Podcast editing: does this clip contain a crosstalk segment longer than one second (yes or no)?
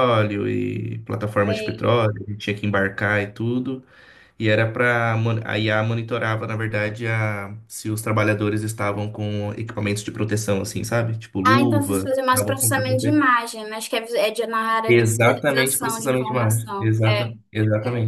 yes